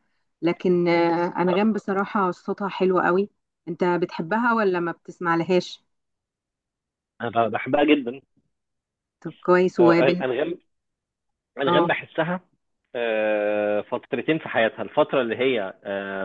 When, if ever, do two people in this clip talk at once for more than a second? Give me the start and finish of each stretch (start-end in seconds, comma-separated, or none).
none